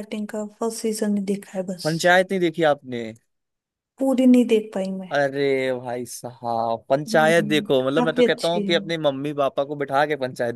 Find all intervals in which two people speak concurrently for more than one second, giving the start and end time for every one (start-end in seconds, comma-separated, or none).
7.1-8.7